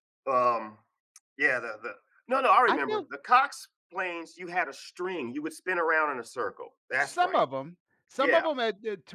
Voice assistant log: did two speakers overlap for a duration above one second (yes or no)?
no